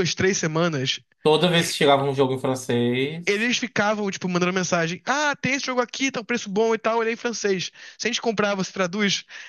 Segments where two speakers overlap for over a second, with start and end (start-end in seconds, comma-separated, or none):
none